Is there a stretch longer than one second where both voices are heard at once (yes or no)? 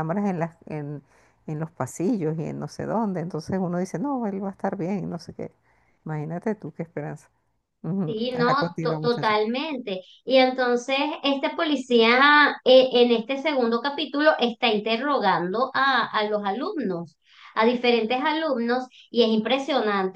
yes